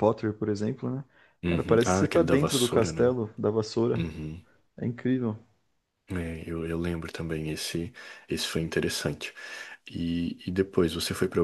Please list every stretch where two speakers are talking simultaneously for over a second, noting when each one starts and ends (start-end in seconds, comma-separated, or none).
1.5-3.1